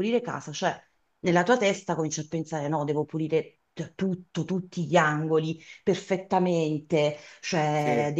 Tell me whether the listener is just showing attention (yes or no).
yes